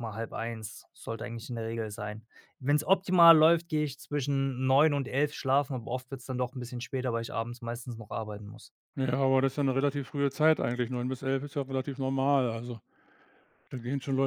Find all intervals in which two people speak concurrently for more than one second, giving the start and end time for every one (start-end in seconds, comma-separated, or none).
none